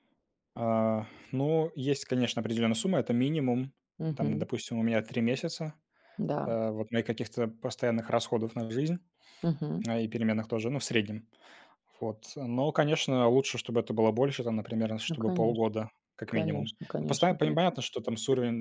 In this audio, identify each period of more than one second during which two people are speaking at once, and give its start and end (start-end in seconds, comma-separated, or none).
16.3-17.6